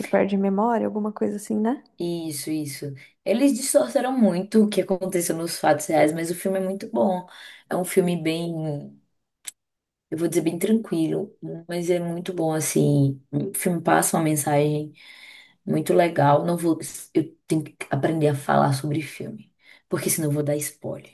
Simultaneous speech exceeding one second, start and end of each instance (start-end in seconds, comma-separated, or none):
none